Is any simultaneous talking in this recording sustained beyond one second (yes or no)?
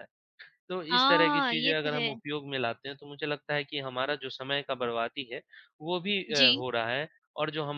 yes